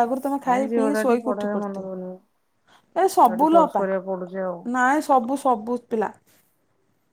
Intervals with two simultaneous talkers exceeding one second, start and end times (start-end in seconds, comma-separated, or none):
0.5-2.1